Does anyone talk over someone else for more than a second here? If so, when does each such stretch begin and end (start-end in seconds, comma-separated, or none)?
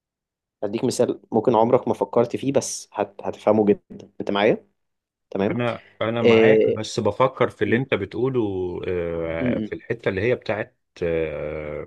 none